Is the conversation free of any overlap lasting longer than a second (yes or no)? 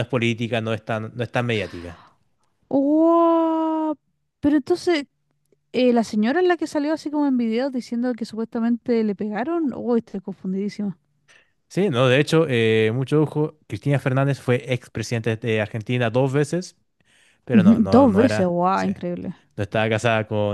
no